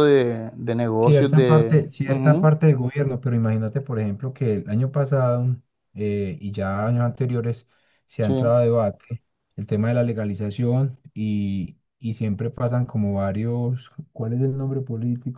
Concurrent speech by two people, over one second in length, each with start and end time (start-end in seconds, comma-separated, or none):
1.0-2.5